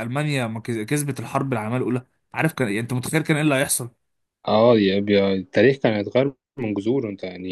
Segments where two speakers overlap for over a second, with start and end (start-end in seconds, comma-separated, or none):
none